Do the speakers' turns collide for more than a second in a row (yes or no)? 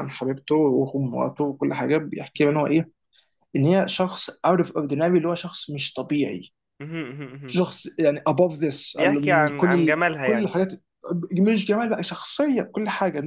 yes